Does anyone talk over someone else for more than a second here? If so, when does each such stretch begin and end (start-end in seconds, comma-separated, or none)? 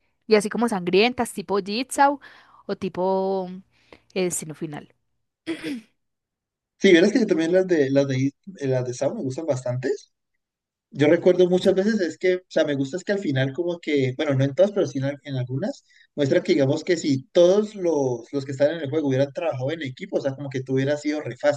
none